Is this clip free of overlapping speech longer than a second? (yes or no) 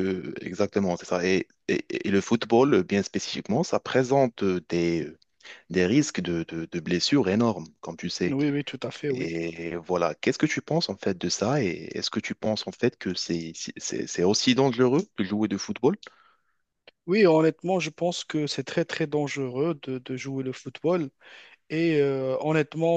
yes